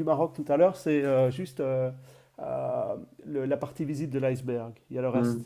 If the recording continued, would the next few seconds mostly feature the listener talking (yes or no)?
yes